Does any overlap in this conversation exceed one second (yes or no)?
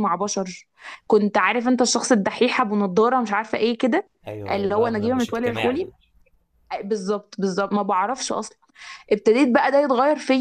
yes